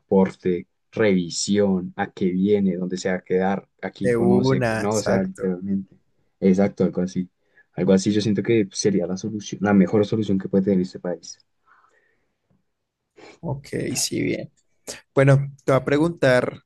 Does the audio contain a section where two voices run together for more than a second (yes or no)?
yes